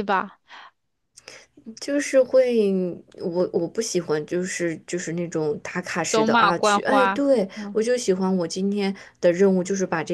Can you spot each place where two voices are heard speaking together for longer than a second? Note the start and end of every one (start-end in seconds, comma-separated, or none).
6.1-7.8